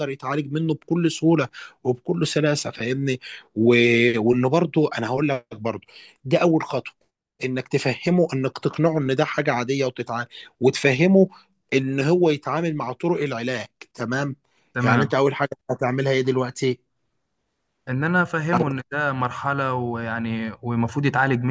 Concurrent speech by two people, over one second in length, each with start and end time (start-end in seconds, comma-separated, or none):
none